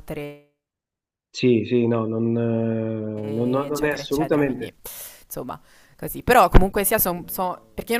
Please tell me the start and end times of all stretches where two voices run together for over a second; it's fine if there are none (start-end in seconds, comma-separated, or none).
3.1-4.7